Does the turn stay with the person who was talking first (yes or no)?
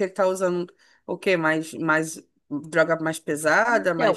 no